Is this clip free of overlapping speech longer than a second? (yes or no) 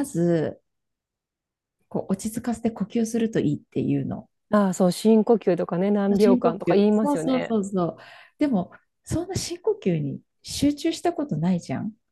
no